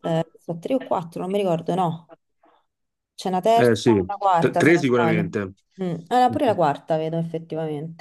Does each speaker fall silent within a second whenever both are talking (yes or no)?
no